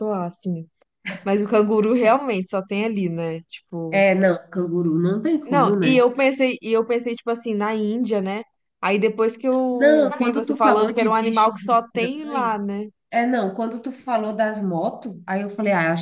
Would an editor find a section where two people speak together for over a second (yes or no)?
yes